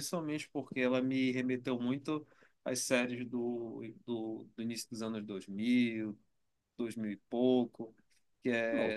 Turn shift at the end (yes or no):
no